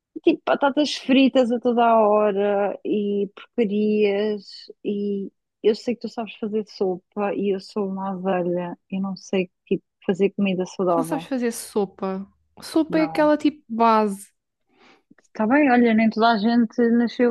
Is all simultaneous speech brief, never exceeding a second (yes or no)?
yes